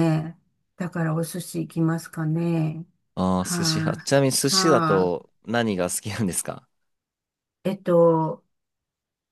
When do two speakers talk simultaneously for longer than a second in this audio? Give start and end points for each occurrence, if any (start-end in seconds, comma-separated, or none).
3.4-5.1